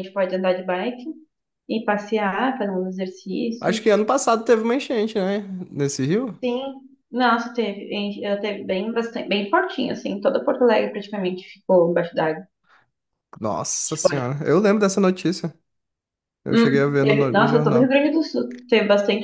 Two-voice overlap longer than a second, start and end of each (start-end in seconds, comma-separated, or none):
16.5-18.0